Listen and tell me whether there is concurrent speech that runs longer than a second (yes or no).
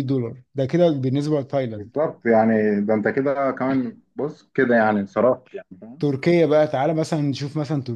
no